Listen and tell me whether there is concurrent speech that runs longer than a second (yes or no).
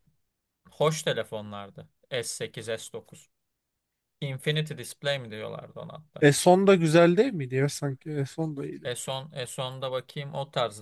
no